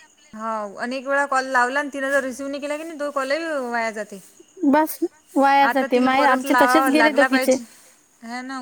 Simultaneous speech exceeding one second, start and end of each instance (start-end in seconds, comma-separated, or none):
5.7-7.5